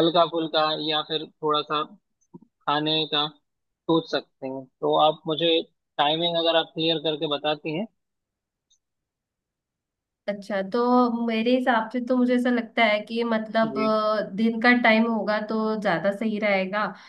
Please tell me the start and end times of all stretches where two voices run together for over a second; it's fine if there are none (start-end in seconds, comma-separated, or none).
none